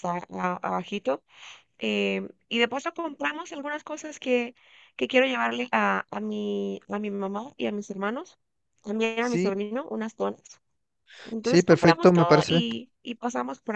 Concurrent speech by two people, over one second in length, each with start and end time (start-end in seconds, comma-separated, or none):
11.4-12.7